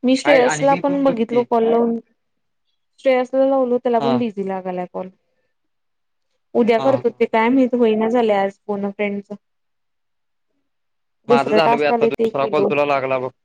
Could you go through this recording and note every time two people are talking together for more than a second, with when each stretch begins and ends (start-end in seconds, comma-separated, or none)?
11.3-12.7